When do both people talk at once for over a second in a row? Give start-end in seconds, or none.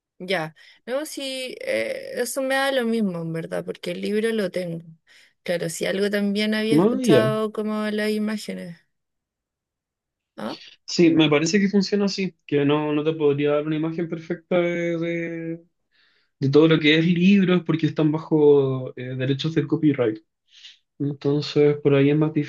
none